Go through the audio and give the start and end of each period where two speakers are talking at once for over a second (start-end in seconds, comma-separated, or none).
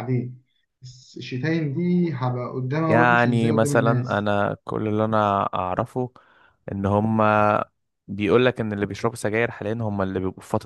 2.9-4.2